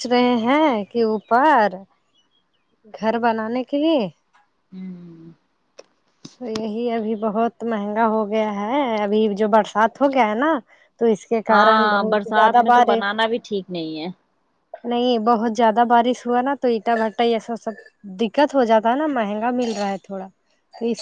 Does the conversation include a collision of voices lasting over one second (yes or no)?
yes